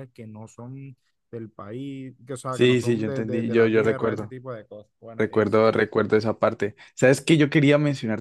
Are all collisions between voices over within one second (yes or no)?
no